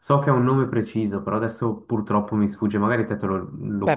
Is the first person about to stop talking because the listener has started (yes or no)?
yes